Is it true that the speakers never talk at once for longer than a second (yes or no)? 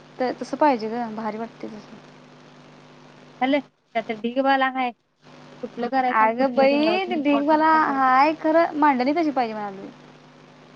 no